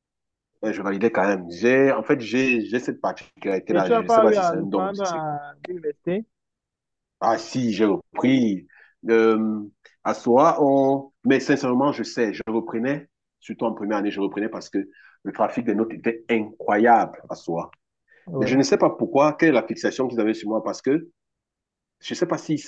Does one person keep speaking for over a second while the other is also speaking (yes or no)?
yes